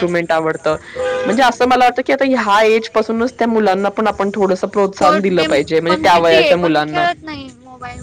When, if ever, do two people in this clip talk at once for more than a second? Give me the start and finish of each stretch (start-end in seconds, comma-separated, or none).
4.8-7.0